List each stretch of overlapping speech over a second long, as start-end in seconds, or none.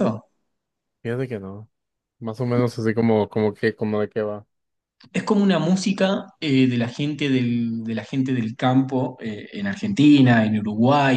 none